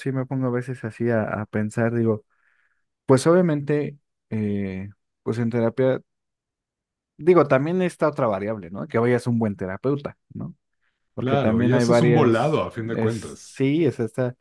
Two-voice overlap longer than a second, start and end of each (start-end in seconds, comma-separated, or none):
11.2-13.6